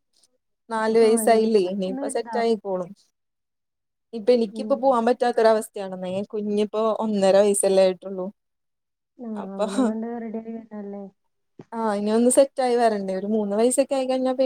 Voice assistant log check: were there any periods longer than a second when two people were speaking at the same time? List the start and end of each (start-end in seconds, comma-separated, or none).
1.1-2.5